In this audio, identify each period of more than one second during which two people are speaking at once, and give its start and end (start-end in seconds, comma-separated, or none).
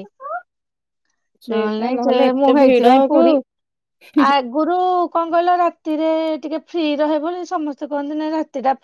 1.5-3.2